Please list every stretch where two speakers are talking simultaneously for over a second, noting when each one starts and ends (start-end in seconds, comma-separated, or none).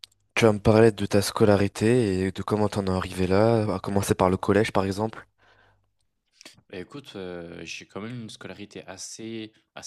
none